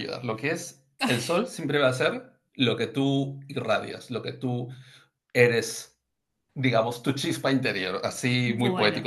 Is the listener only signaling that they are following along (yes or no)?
yes